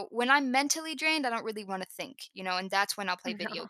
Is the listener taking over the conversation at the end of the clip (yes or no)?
no